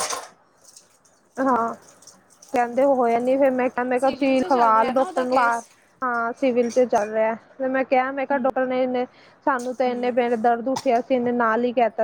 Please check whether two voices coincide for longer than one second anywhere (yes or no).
yes